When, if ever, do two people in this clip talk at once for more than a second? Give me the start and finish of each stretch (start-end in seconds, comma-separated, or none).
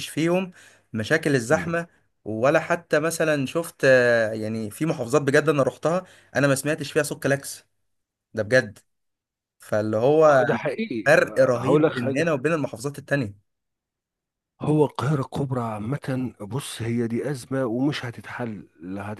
11.1-12.3